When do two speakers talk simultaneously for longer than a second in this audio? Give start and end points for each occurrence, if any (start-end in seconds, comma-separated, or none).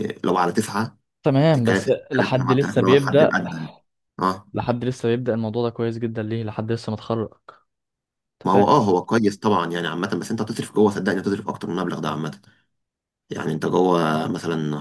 1.5-3.3